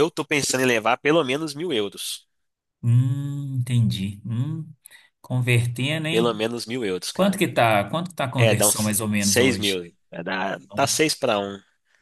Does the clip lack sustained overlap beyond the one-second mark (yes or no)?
no